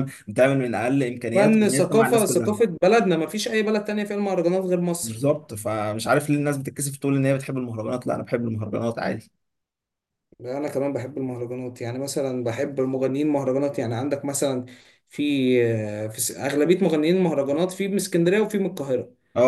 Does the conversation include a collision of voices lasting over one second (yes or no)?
yes